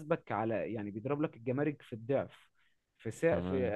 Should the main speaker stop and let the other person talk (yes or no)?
no